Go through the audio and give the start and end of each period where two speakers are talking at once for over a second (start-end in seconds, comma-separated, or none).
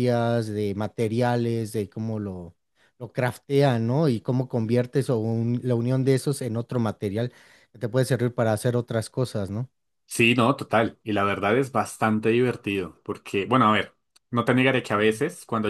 none